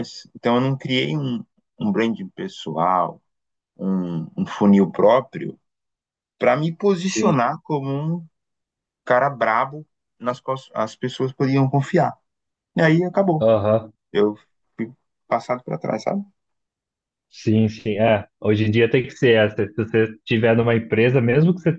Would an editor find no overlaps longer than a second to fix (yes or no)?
yes